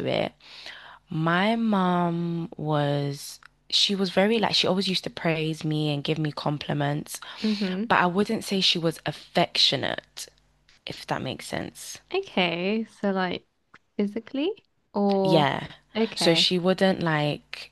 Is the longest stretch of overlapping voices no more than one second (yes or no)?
yes